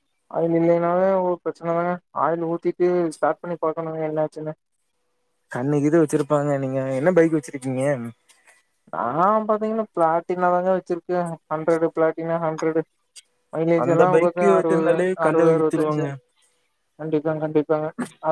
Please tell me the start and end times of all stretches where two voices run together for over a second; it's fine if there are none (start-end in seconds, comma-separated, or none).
13.8-16.0